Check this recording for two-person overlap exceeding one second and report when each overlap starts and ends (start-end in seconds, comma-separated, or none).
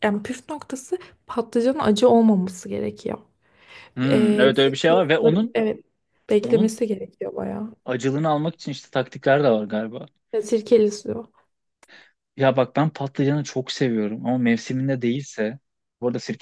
4.0-5.6